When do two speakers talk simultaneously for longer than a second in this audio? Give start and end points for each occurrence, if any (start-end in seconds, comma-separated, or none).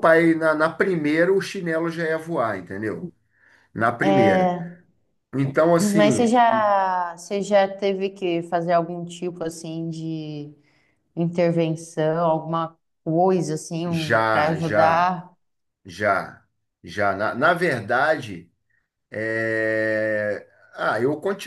13.8-15.2